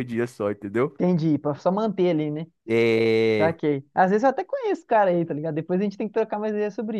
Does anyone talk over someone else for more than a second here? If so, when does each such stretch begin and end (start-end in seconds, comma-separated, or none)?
none